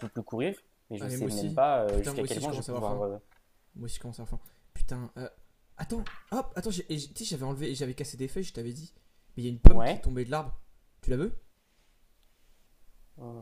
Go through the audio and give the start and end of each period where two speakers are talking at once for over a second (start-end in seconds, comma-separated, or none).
1.0-3.0